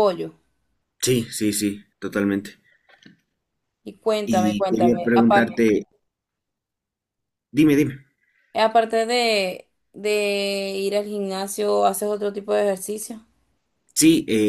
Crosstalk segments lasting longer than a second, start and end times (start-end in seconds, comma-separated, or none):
4.3-5.6